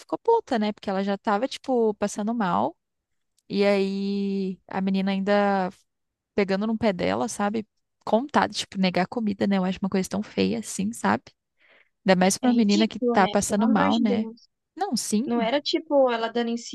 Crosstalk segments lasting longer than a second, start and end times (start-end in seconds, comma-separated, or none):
12.4-14.3